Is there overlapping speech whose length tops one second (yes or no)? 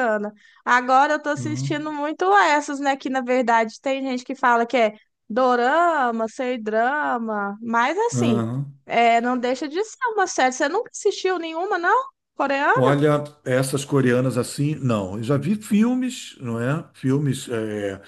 no